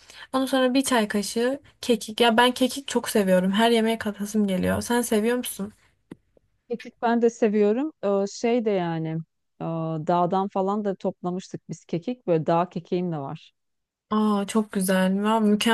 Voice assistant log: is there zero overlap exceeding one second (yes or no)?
yes